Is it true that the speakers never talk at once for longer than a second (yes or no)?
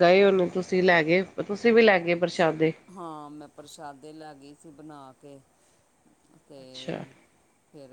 yes